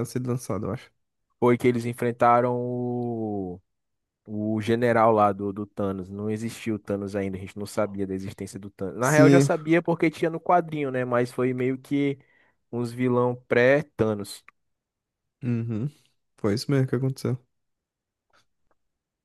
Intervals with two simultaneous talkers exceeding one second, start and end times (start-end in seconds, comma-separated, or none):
none